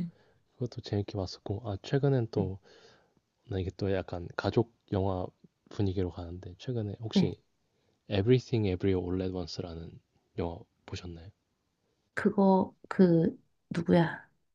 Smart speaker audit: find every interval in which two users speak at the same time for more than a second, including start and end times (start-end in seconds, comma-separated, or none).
none